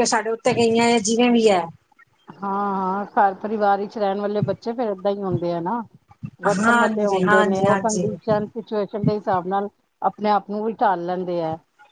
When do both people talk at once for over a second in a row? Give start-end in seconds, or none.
6.6-8.1